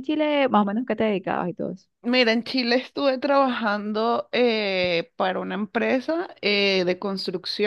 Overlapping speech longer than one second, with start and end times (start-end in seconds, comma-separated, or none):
none